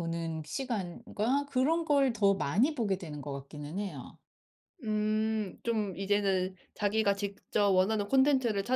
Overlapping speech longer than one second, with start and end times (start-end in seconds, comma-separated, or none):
none